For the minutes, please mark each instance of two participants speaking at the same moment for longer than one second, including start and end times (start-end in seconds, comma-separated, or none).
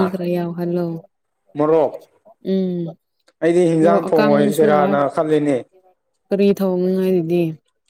3.8-5.0